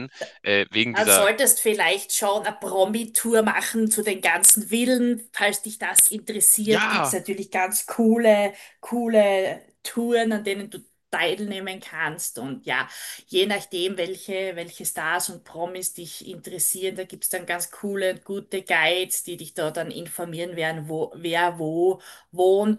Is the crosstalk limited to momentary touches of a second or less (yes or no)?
yes